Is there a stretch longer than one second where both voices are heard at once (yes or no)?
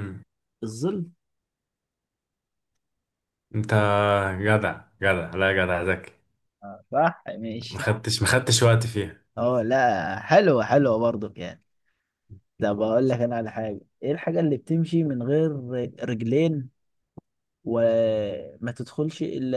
no